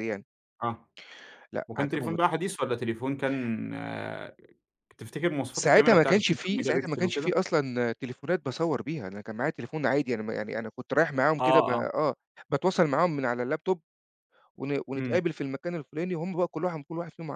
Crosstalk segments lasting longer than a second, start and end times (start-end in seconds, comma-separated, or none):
5.5-7.3